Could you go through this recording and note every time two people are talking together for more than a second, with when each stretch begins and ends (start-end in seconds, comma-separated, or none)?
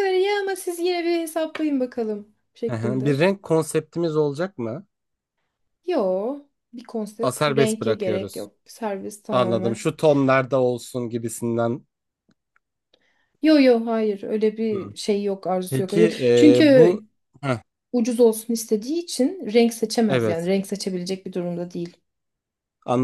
7.2-8.5, 15.7-16.9